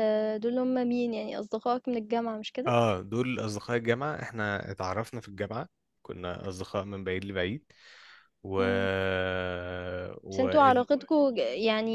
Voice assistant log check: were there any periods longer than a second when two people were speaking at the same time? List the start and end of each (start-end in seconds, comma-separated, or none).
none